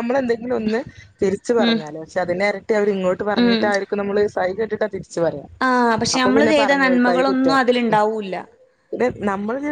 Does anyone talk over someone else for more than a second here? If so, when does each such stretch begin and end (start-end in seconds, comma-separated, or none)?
5.7-7.6